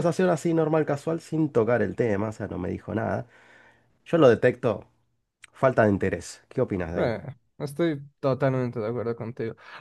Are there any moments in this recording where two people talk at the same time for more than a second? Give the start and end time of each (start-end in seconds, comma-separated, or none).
none